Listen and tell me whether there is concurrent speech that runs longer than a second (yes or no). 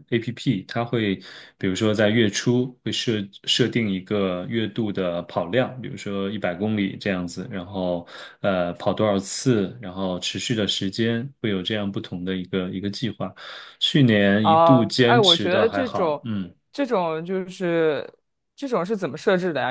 yes